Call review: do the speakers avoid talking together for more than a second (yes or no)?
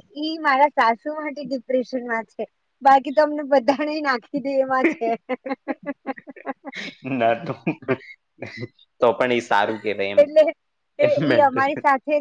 yes